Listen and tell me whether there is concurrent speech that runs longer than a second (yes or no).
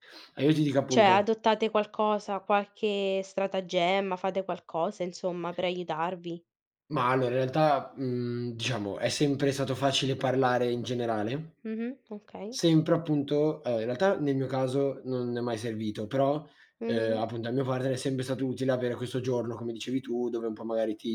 no